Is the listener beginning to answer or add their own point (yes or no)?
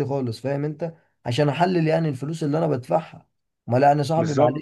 no